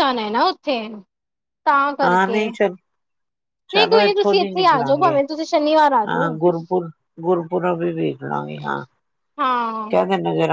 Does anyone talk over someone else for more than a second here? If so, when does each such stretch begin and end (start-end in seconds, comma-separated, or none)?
3.7-5.2